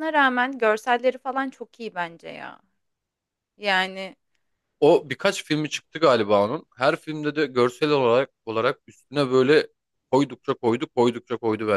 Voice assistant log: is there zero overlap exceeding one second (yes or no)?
yes